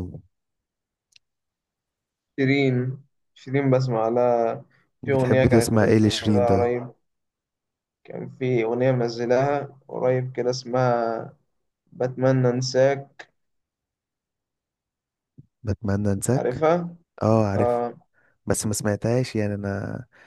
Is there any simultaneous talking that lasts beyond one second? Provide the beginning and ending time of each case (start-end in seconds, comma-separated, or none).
5.0-6.7